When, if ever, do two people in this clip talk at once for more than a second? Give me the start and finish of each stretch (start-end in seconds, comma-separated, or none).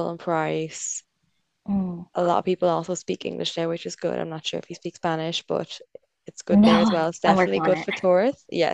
6.5-7.9